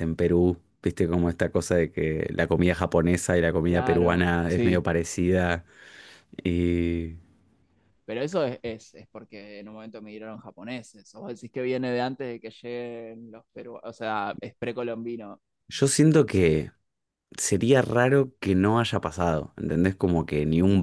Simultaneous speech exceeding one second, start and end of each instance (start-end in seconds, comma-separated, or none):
3.6-4.8